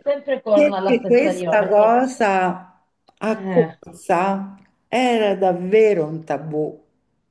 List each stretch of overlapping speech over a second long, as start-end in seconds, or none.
0.5-2.0